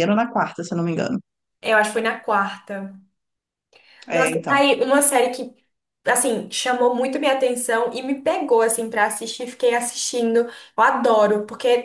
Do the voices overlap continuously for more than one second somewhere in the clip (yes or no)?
no